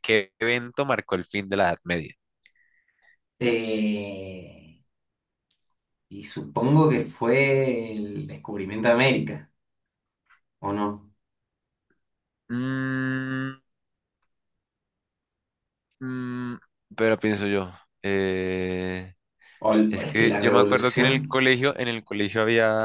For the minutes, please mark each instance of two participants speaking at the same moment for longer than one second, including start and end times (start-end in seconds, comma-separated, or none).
19.8-21.4